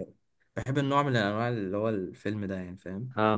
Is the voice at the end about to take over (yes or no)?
yes